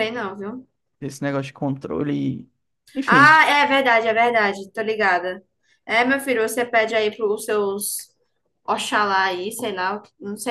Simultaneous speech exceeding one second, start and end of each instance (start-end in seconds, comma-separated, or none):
none